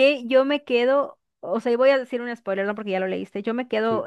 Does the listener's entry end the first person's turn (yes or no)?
no